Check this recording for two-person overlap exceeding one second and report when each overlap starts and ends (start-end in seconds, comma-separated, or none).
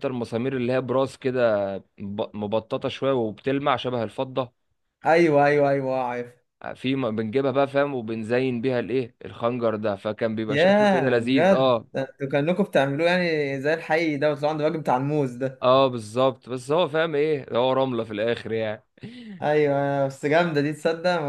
10.5-11.9